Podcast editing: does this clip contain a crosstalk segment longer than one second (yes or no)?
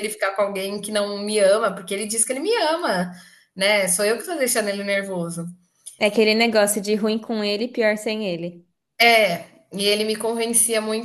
no